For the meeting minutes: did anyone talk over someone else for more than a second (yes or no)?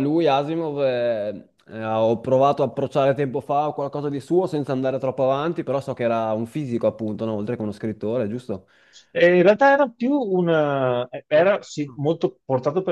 no